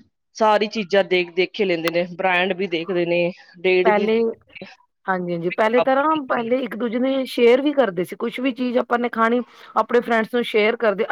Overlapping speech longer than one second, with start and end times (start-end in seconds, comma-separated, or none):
none